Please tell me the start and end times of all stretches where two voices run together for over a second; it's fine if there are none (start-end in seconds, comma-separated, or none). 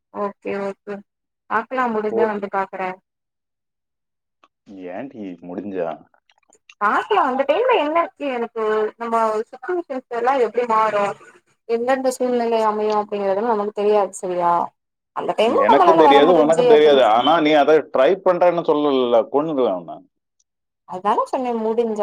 none